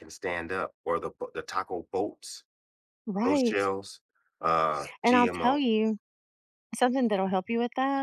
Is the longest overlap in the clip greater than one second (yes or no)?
no